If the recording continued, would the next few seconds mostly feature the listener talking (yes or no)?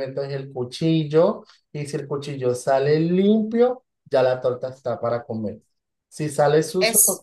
no